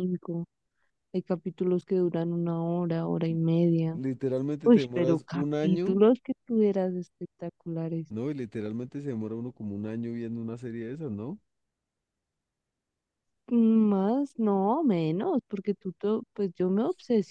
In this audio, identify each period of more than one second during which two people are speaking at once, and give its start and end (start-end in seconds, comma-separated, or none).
4.7-6.0